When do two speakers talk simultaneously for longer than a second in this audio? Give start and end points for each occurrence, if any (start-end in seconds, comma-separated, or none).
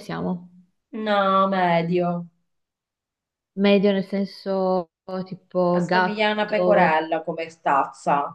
5.7-7.0